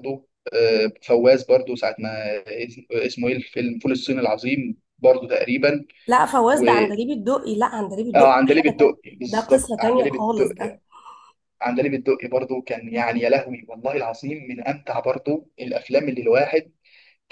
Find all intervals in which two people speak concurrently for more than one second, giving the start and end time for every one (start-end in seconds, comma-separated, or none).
8.2-10.8